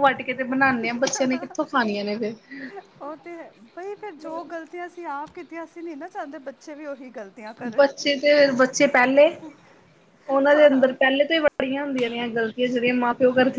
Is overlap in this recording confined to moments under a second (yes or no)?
yes